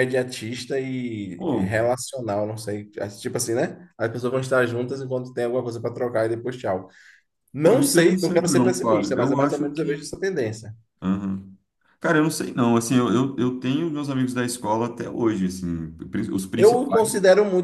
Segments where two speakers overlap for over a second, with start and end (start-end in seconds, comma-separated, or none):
7.6-10.1